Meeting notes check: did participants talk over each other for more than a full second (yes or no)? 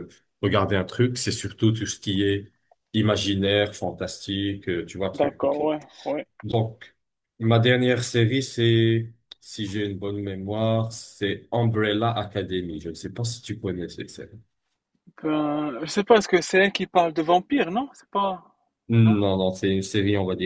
no